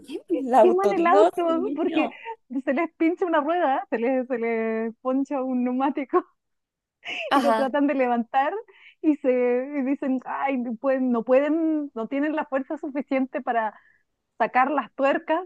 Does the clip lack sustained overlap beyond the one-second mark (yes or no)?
no